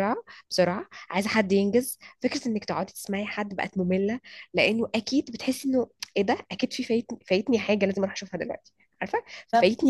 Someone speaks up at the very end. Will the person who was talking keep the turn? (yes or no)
yes